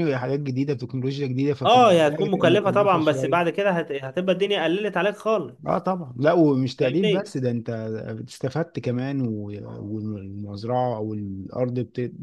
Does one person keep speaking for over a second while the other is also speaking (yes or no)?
yes